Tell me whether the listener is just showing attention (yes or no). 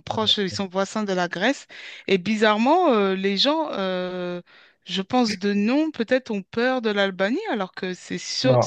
no